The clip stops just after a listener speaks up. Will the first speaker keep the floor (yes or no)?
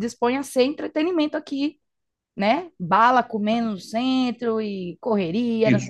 no